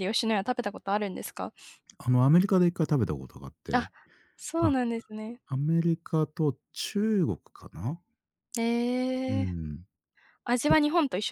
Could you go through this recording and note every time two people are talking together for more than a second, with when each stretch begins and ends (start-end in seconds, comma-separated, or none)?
none